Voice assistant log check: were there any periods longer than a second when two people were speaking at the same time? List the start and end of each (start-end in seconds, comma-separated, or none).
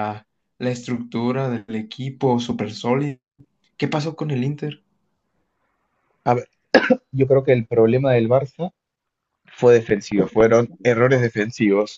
none